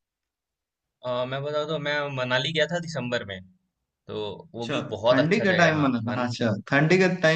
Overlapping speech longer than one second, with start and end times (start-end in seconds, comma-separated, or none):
4.6-6.3